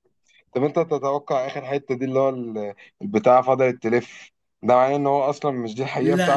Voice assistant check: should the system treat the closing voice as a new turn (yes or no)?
yes